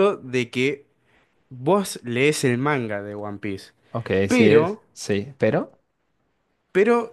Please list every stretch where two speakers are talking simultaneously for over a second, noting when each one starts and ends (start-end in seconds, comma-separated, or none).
none